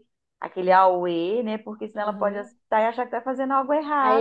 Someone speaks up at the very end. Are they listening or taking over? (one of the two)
taking over